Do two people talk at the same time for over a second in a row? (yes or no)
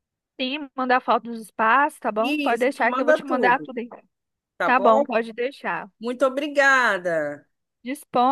yes